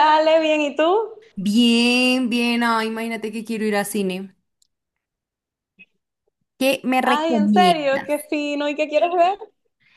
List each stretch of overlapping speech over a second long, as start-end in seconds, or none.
7.0-8.3